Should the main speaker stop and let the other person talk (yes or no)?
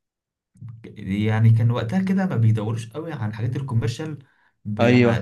no